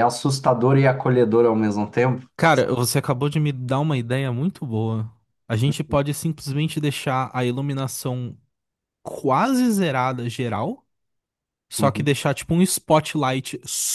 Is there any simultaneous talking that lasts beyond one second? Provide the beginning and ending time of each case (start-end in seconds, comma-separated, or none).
none